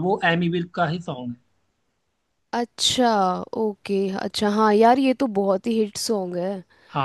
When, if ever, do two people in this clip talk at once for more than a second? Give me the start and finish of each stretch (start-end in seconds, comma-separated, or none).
none